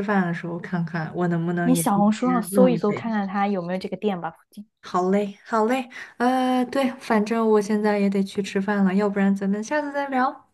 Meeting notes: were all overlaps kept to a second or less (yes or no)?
no